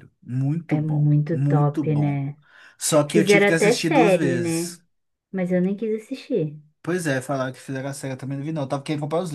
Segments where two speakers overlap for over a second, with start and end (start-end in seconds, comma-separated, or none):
0.7-2.2, 3.1-4.8